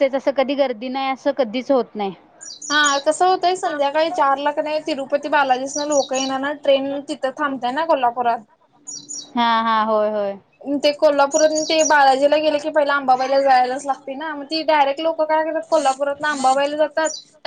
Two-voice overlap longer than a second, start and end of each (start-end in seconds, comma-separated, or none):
none